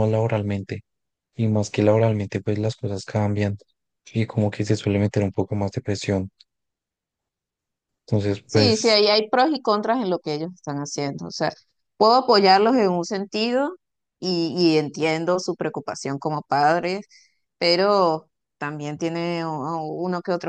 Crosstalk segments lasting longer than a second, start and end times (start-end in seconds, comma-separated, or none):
none